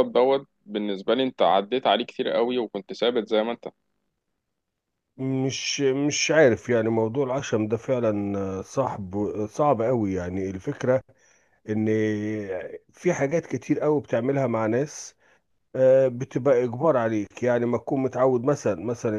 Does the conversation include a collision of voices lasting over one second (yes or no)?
no